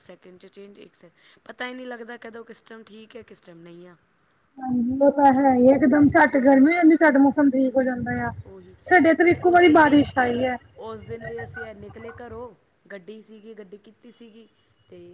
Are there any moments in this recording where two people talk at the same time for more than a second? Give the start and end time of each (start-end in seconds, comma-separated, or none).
none